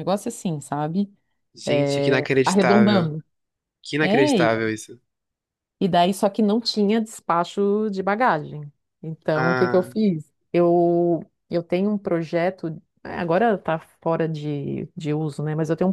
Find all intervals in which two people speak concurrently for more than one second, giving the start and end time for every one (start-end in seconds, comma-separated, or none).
1.6-3.1